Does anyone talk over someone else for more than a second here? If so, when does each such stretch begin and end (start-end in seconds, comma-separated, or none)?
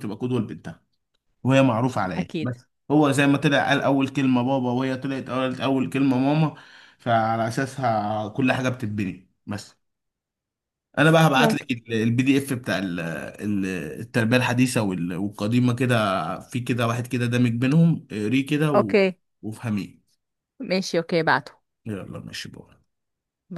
none